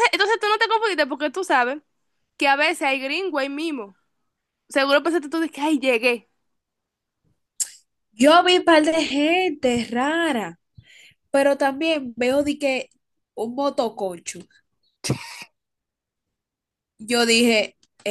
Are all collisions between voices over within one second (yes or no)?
yes